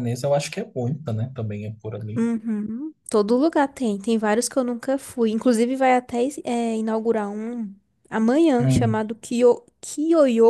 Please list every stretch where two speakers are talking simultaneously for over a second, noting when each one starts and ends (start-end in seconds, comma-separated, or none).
none